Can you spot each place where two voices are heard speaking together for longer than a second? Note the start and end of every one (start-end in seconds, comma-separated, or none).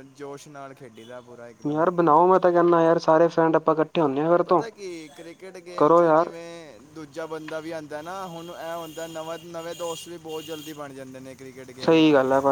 none